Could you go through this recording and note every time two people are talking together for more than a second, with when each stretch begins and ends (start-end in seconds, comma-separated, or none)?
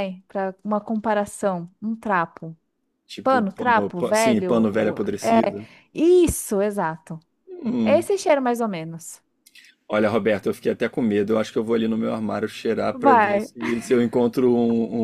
3.2-5.6